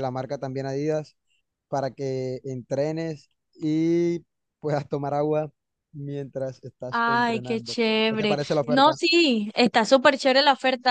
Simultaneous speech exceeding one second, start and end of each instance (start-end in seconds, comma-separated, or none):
6.9-9.0